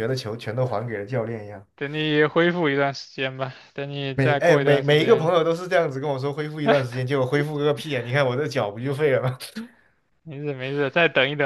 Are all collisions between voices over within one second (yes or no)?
no